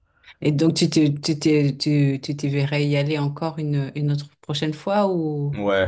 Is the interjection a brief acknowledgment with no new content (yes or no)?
no